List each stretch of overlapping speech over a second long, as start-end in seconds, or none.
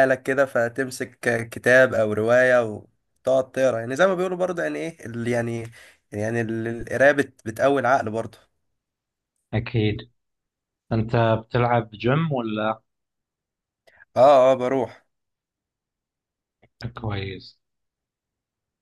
none